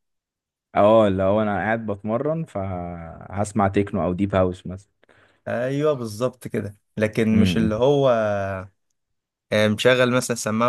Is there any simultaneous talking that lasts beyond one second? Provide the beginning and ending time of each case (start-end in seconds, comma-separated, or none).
none